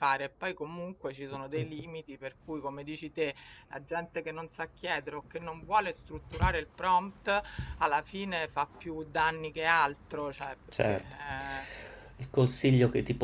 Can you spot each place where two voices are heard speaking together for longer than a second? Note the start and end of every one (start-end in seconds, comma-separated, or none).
none